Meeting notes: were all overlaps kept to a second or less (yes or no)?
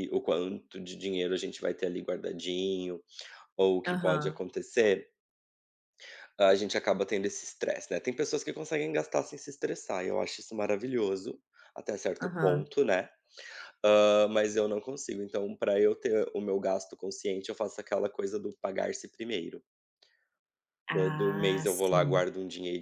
no